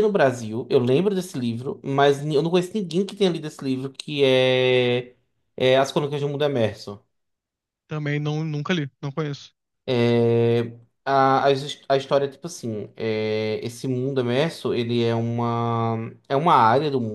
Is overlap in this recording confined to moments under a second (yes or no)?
yes